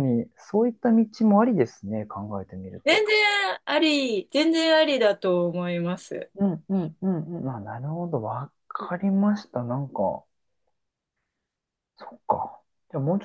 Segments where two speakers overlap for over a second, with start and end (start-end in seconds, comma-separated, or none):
none